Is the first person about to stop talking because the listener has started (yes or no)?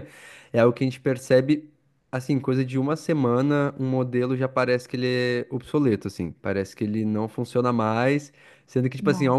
no